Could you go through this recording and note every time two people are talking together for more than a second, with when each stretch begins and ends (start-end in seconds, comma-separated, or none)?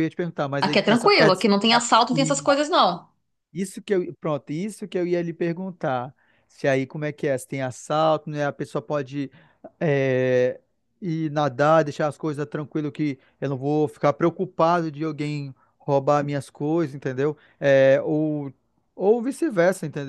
0.6-2.5